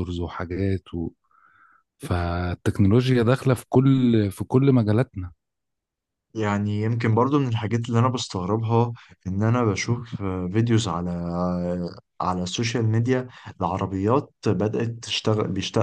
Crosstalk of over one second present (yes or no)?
no